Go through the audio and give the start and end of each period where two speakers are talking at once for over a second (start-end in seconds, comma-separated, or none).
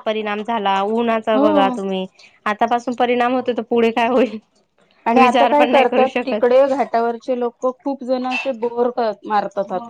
5.2-6.6